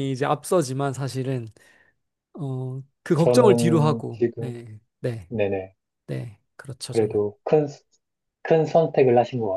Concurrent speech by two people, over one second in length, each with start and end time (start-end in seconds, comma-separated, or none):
3.2-4.6